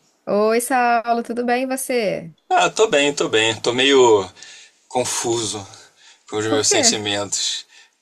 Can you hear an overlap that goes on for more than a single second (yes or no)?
no